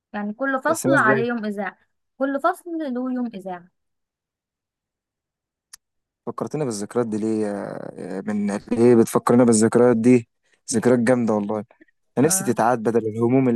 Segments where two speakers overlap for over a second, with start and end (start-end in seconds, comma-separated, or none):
none